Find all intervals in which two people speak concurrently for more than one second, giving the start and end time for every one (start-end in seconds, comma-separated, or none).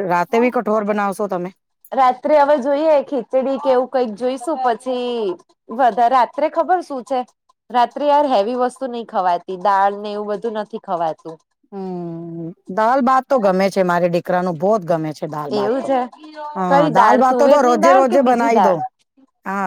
17.0-18.8